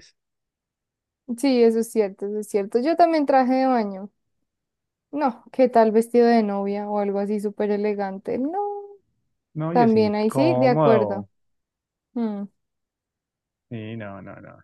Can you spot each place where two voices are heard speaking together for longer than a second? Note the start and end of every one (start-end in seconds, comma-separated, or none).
9.7-11.3